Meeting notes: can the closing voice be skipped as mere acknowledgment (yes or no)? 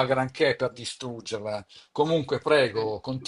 no